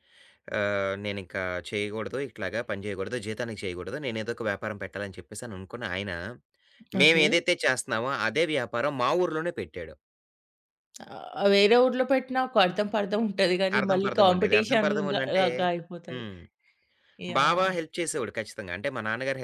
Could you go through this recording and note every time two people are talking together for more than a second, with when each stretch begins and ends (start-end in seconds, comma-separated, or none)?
13.8-15.4